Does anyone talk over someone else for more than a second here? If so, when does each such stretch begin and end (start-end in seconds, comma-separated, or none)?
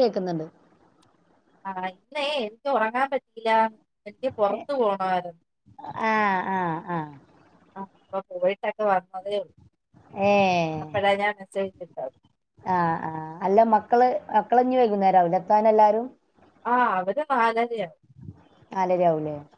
none